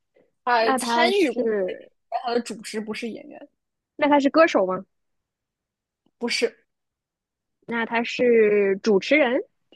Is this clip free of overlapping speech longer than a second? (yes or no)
no